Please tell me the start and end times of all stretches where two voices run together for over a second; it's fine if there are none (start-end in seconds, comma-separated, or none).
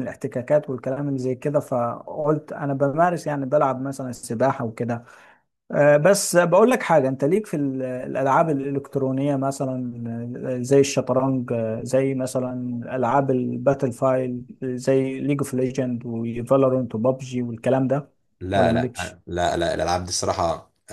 none